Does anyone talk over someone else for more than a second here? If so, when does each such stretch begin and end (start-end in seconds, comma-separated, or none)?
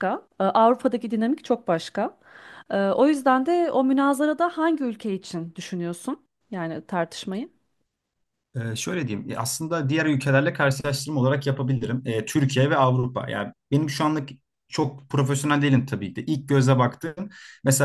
none